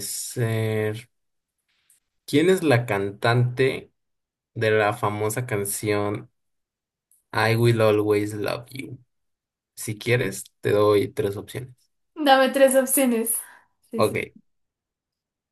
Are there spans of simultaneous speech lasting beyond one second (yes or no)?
no